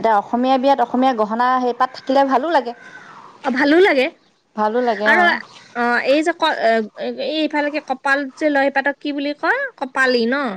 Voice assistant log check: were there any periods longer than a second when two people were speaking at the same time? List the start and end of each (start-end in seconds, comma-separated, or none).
none